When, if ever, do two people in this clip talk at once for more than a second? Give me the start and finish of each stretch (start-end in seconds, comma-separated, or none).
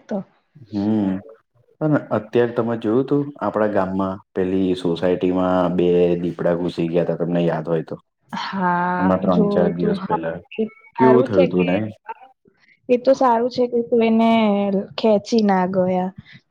8.4-10.2